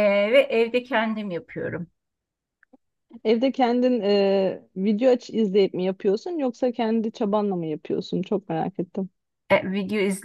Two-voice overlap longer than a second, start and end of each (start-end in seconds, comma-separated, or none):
none